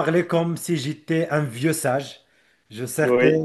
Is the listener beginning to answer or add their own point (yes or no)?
no